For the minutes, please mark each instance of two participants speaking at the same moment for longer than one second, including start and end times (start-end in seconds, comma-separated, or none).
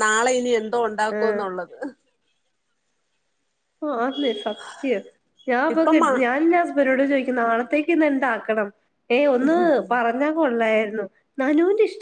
none